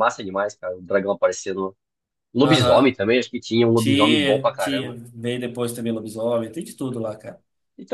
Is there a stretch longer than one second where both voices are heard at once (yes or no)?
yes